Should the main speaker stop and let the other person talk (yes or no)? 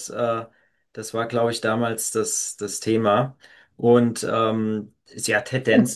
no